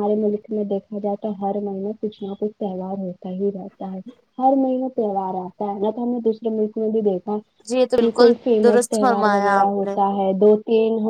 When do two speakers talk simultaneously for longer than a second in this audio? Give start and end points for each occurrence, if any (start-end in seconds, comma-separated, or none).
8.0-10.0